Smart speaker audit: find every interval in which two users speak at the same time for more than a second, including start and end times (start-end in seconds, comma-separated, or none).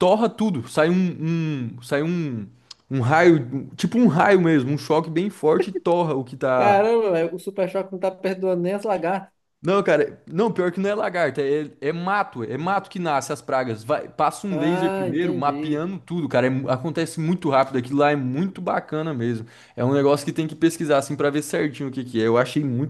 14.5-15.8